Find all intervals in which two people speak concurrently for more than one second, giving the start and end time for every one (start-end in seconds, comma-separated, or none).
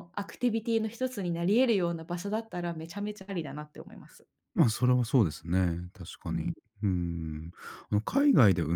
none